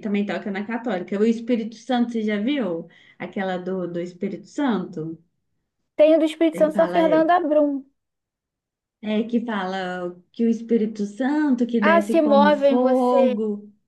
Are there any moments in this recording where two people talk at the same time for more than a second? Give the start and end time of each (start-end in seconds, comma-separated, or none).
11.8-13.4